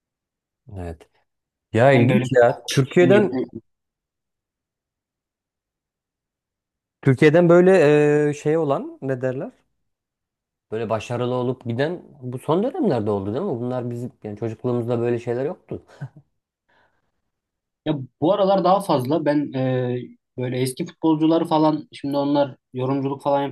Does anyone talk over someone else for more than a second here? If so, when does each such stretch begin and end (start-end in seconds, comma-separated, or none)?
1.9-3.4